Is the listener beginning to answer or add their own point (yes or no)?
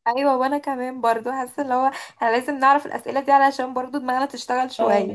yes